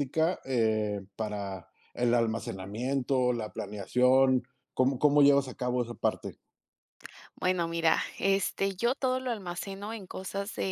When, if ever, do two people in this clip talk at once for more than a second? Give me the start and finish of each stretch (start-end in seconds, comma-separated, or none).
none